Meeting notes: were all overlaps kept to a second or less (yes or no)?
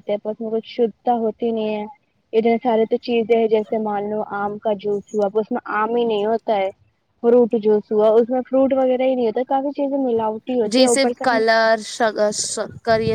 yes